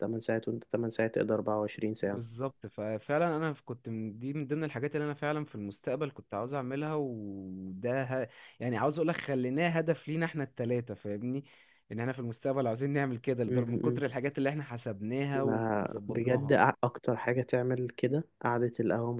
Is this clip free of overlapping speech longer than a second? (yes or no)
no